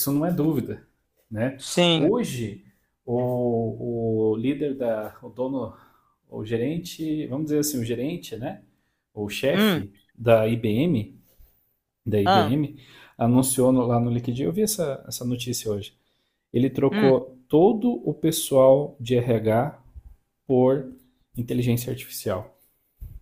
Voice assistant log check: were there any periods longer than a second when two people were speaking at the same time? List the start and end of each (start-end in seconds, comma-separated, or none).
none